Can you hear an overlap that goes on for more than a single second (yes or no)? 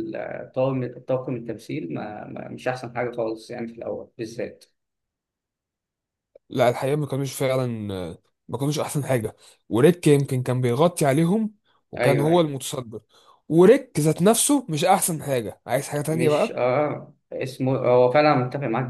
no